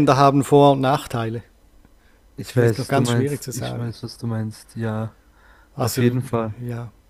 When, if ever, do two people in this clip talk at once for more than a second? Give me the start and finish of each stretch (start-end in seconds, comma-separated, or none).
2.4-3.9